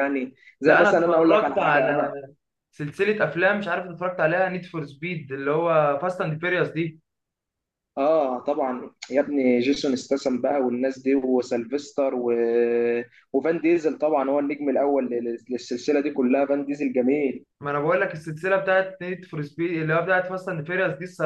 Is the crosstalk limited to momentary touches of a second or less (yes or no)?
no